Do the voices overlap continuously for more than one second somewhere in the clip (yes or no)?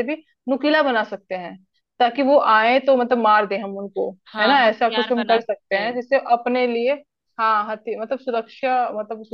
yes